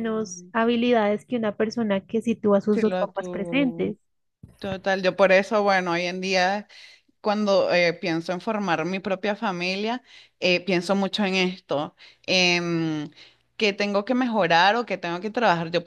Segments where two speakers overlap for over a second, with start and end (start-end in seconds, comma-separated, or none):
2.7-4.0